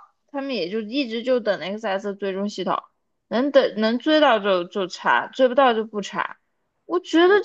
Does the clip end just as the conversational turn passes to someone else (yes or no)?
no